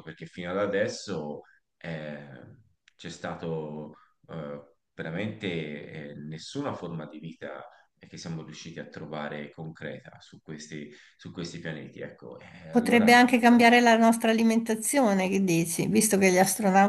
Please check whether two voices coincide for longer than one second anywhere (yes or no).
no